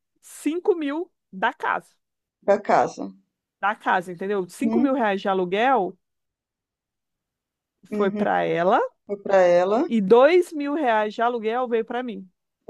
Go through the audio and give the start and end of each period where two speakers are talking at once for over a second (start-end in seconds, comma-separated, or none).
none